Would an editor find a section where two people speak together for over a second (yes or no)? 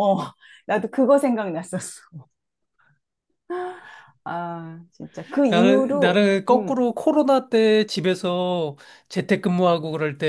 yes